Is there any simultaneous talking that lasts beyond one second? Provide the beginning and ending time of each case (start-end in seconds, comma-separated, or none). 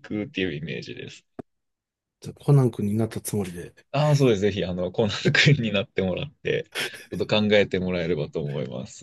none